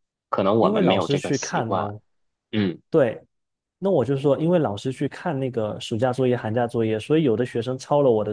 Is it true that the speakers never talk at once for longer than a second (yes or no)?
no